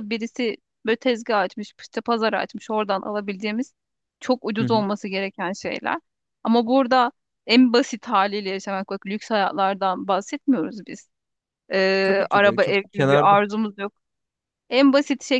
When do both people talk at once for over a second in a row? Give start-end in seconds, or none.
12.0-13.4